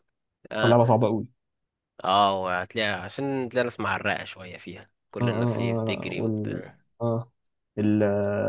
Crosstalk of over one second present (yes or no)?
yes